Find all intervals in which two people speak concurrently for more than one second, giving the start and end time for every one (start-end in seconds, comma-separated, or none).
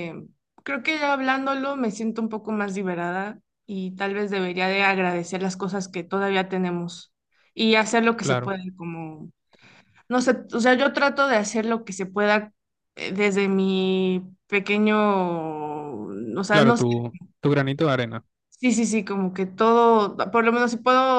none